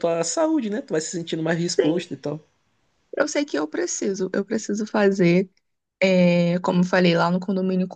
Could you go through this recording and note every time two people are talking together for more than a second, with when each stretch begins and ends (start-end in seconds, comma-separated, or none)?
none